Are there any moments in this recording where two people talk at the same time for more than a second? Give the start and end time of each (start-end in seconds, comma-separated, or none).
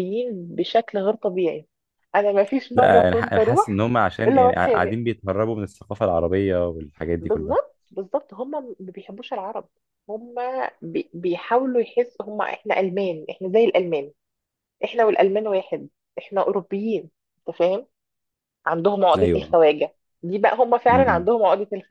2.8-5.0